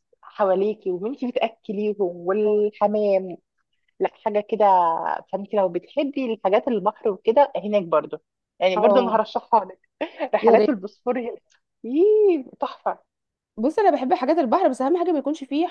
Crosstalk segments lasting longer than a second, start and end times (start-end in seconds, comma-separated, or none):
none